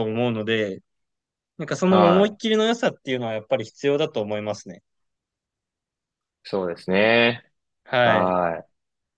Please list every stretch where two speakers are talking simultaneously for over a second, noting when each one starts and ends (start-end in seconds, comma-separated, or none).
none